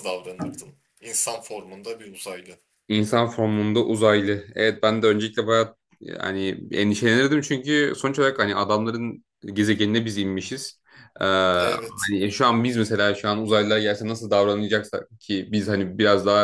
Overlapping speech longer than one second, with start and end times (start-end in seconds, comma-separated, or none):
none